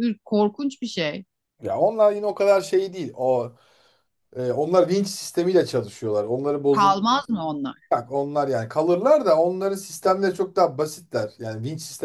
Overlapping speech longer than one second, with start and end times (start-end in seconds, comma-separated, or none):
none